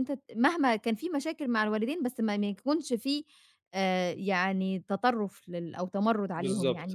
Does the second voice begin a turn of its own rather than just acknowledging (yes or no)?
yes